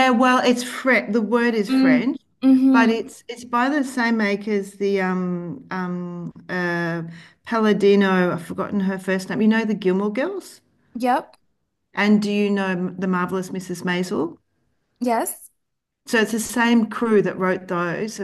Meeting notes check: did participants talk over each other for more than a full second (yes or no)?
no